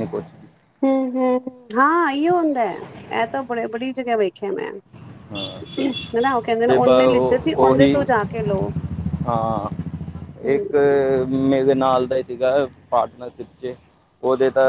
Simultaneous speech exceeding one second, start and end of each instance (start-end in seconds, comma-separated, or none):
6.7-8.0